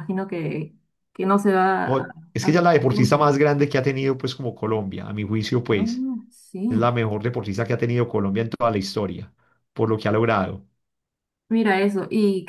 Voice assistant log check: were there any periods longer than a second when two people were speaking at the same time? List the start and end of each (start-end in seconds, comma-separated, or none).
1.9-3.3